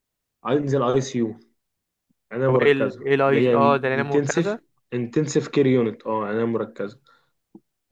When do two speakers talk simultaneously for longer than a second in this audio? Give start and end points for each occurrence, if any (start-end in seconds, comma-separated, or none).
2.5-4.6